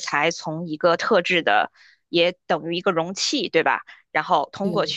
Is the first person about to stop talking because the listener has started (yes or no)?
no